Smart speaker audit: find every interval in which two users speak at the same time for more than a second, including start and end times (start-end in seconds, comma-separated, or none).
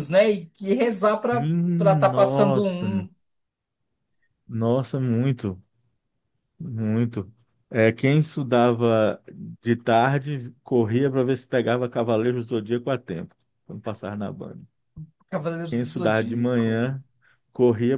1.3-2.9, 15.7-16.9